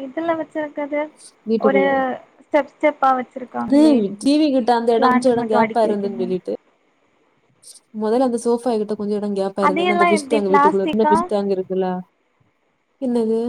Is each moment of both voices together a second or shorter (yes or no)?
no